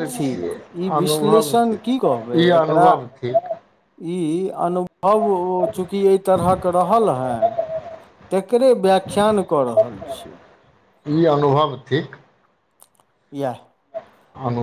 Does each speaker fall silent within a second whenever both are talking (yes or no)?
no